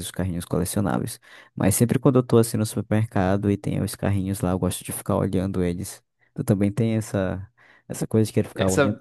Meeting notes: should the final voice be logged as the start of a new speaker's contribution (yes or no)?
no